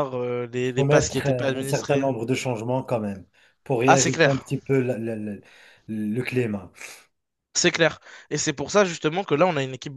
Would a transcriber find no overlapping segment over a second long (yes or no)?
no